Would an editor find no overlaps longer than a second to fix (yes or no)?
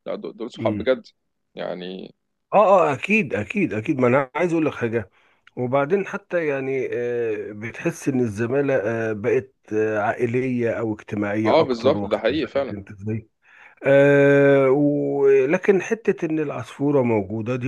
no